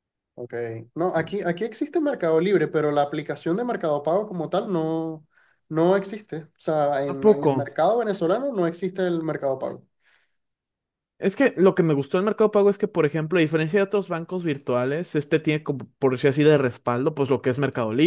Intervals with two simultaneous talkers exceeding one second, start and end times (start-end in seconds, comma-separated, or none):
none